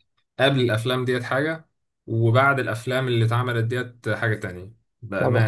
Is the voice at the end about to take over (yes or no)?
yes